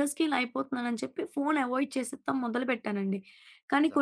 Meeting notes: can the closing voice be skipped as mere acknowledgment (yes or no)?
yes